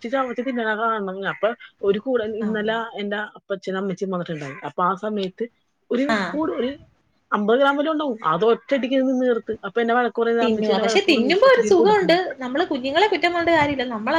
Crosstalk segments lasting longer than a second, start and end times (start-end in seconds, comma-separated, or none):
10.4-12.3